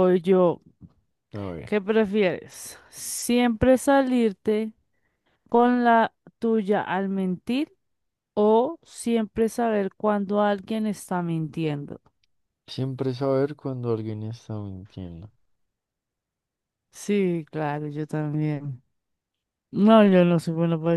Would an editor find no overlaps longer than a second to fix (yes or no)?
yes